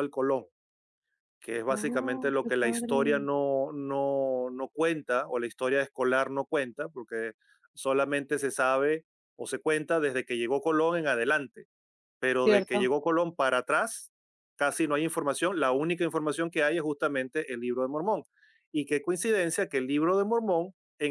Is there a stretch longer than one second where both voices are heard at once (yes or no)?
yes